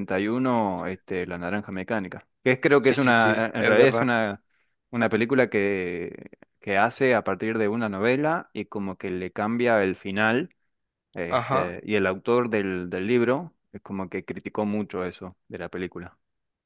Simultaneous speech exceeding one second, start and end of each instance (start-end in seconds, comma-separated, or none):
2.8-4.1